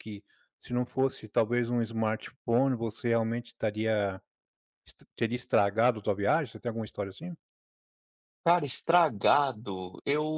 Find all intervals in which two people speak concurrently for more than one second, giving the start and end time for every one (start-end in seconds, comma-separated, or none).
none